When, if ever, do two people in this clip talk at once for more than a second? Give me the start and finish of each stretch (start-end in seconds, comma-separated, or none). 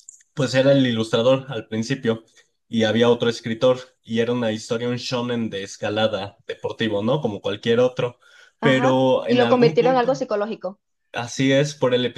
8.6-10.2